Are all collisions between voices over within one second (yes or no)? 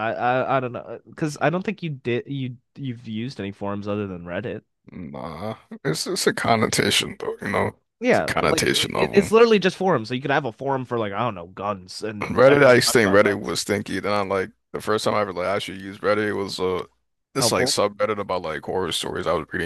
no